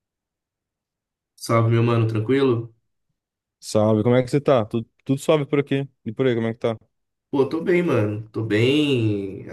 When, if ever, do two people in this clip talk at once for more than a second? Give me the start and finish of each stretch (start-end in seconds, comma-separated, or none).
none